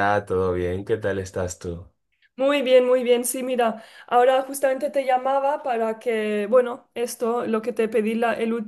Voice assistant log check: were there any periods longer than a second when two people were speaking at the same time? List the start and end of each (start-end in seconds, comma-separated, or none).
none